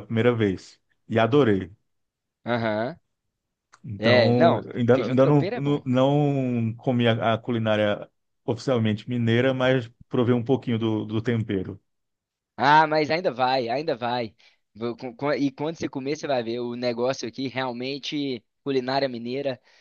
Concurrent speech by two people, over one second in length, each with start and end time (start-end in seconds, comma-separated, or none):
4.0-5.8